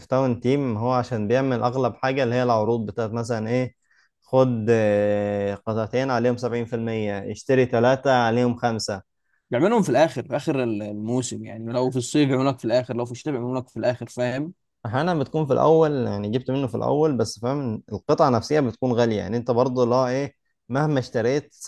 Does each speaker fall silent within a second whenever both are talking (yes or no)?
yes